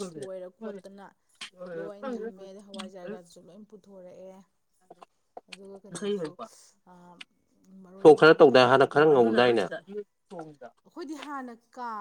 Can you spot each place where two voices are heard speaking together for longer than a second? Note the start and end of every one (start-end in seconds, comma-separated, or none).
8.0-9.6